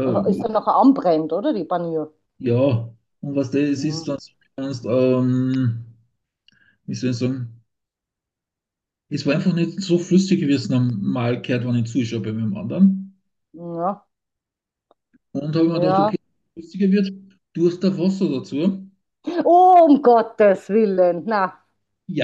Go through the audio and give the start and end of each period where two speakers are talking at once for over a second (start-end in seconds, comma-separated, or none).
none